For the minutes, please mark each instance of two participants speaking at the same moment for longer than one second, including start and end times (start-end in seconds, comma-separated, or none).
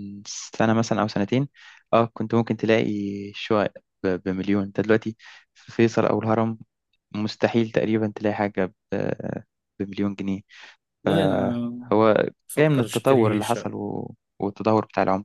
12.5-13.8